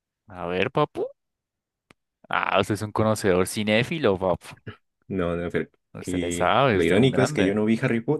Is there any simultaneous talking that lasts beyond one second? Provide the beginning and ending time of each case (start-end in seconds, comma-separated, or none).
6.1-7.6